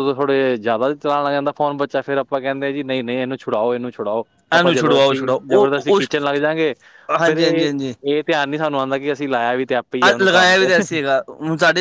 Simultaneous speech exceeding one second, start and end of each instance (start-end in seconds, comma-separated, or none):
4.6-6.1